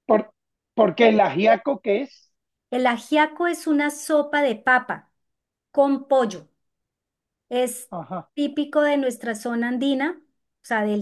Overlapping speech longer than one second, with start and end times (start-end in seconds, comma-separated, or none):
none